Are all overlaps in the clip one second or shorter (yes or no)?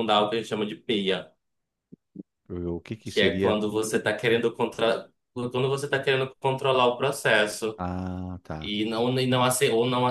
yes